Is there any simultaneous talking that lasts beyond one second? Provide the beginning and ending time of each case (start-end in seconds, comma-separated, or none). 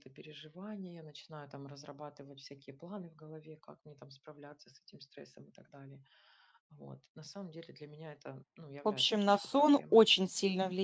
8.8-10.0